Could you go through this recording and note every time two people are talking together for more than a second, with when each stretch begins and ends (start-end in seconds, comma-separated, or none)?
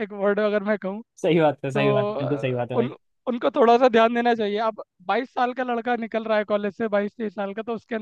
1.7-2.9